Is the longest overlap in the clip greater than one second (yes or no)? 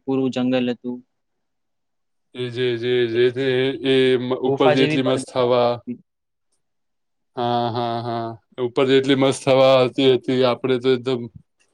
yes